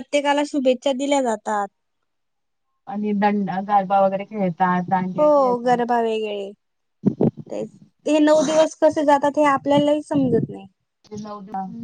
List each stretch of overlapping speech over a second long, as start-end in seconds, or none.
none